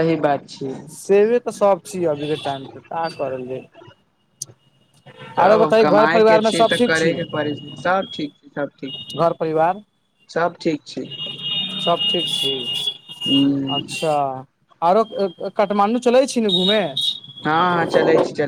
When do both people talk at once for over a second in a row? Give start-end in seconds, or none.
5.4-7.1